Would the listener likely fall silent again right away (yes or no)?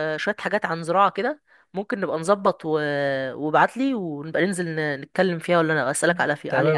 no